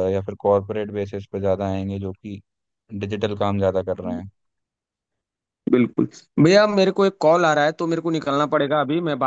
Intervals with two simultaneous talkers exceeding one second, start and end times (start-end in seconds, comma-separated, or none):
none